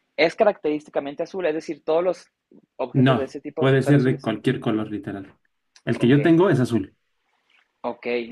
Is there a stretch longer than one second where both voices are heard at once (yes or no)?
yes